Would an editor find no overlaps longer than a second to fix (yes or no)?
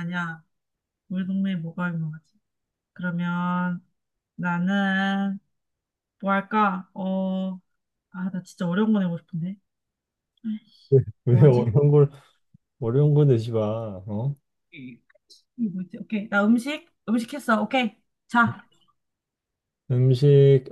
yes